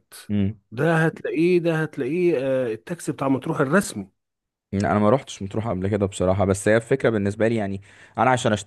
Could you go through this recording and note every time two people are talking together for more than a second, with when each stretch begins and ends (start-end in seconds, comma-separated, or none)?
none